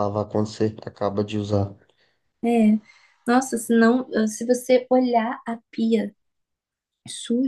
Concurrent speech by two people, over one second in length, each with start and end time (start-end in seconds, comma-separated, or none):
none